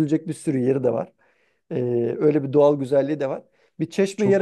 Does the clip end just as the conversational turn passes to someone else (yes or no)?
no